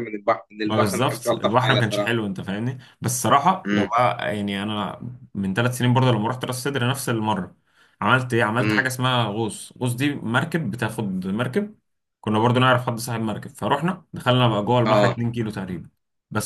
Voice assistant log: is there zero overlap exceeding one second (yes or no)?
no